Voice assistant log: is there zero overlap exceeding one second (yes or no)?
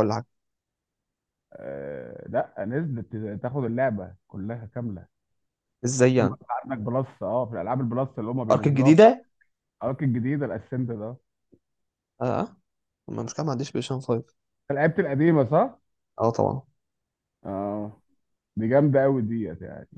yes